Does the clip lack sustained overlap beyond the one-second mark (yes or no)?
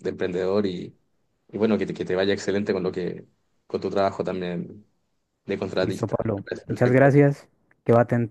no